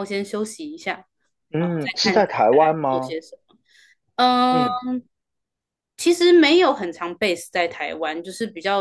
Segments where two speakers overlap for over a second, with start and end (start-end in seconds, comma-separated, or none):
1.6-3.2